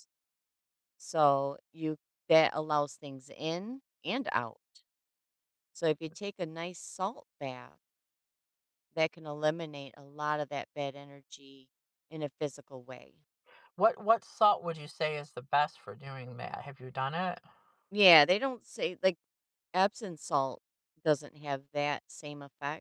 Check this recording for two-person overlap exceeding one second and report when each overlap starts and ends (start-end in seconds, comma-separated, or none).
none